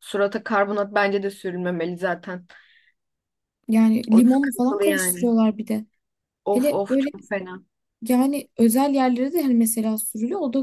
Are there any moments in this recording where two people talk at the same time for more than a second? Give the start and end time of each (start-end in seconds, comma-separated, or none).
4.1-5.3